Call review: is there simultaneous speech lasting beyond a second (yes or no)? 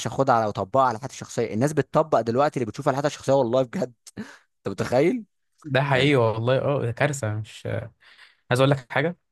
no